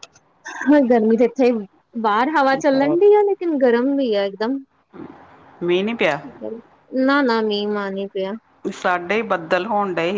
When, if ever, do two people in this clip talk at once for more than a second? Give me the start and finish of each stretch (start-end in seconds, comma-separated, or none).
none